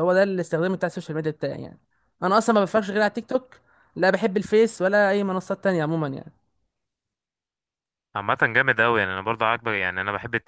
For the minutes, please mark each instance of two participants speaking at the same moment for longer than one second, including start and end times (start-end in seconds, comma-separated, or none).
none